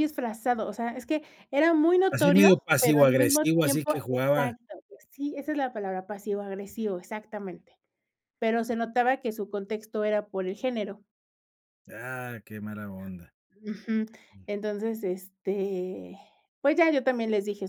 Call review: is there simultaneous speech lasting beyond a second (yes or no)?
yes